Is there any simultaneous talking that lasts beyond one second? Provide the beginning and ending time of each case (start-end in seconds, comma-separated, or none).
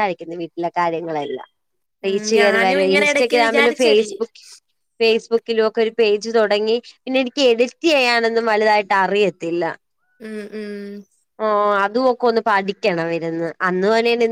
2.1-4.1